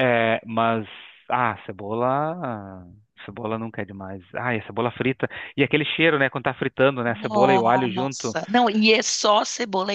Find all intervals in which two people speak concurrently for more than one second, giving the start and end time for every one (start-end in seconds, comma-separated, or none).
7.1-8.4